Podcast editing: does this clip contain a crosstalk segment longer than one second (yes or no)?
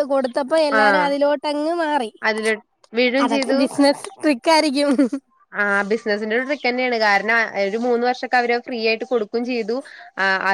no